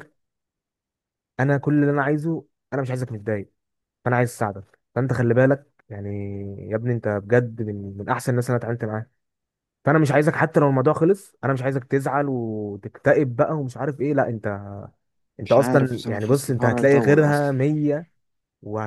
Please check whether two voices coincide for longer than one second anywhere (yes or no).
yes